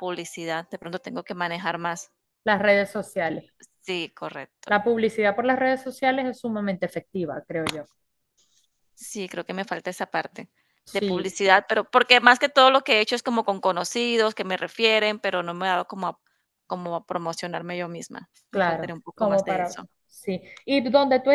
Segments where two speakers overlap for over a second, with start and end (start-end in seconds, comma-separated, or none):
18.5-19.9